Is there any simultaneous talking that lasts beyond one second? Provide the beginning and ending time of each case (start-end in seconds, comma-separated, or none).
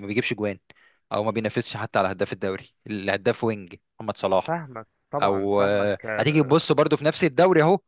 5.2-6.7